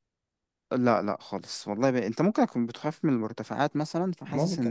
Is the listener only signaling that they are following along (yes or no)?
no